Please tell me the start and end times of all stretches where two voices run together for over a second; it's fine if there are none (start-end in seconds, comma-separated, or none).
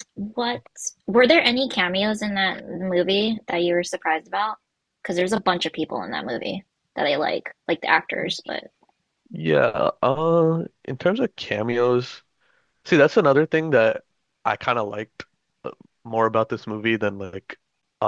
none